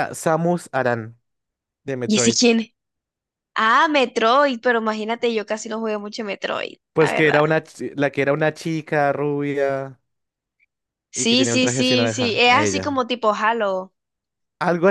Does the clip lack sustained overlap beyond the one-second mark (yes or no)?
no